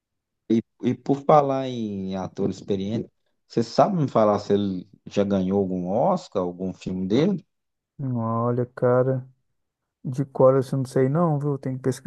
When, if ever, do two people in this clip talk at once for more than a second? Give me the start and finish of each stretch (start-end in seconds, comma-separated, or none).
none